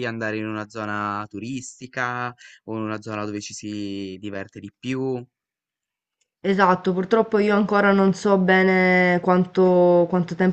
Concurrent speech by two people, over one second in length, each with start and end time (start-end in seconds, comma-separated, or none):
none